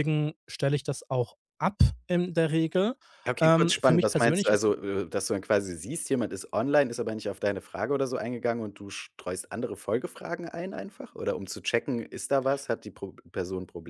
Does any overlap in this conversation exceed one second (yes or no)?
yes